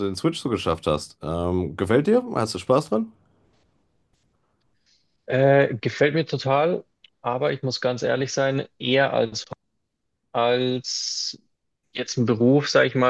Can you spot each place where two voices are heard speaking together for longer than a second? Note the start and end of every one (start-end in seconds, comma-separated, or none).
none